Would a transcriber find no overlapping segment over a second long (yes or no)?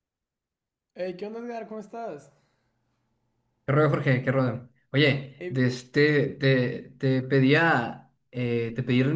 yes